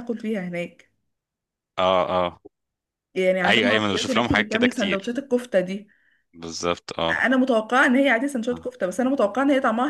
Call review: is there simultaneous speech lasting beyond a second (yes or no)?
yes